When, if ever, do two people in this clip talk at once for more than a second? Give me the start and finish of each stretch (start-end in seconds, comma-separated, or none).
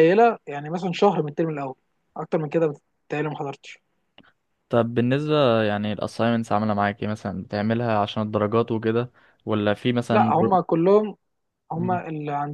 none